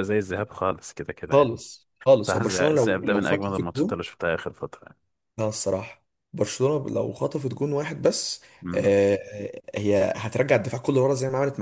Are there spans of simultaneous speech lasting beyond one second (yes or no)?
yes